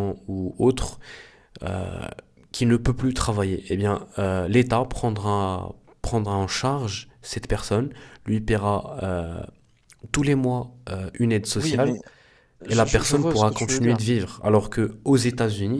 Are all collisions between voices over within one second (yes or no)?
no